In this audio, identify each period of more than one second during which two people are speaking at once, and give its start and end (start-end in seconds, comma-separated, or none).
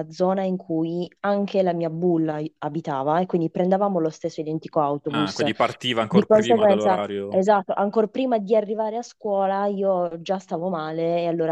6.1-7.4